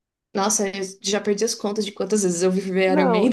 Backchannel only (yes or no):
no